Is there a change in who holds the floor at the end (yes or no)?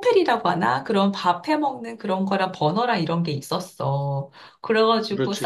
no